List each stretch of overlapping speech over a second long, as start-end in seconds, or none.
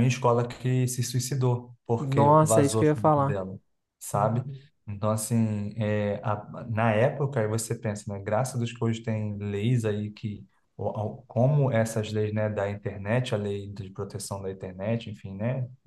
2.0-3.4